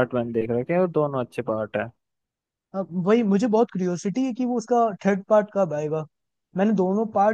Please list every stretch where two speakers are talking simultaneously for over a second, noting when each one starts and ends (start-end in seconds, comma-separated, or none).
none